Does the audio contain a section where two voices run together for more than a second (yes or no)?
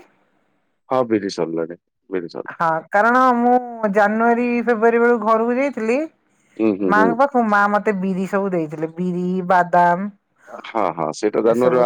no